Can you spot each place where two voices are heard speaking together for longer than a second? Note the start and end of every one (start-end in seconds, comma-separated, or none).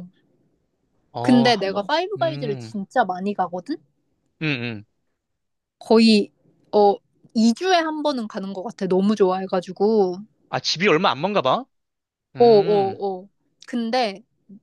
1.2-2.7